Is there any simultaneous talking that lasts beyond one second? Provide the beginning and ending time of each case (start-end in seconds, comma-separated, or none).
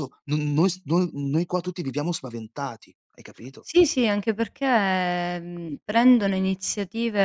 none